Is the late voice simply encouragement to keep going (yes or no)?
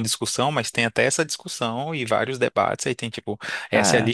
yes